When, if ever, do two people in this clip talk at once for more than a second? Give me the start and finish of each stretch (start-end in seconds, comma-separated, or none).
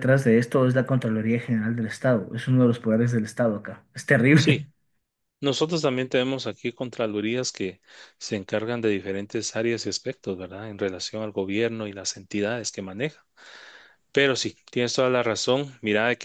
none